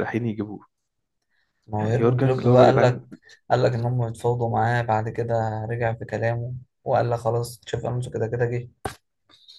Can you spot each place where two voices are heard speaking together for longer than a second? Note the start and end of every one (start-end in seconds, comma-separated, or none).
1.8-3.0